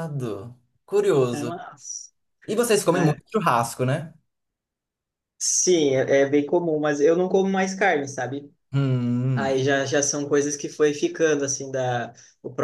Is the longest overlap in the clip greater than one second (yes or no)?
no